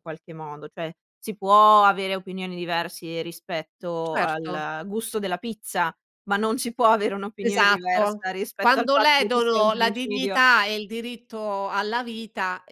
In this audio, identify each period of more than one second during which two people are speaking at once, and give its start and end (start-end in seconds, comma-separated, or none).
7.4-10.4